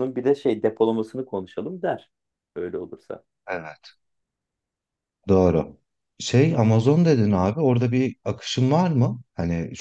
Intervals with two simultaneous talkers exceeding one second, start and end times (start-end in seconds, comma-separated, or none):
none